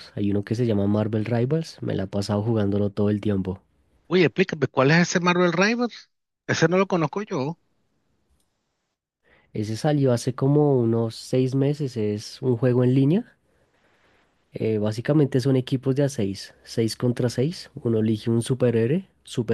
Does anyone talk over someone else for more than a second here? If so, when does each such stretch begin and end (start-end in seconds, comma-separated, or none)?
none